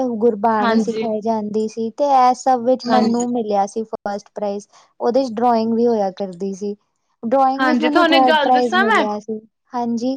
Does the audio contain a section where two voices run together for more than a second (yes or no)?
yes